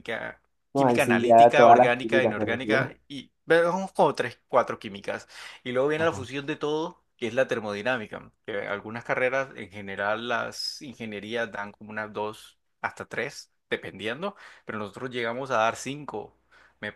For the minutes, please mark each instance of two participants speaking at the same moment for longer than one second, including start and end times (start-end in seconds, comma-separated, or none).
0.8-3.0